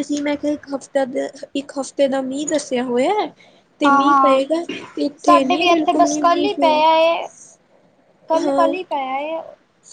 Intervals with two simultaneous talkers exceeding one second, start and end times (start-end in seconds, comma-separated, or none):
5.2-6.8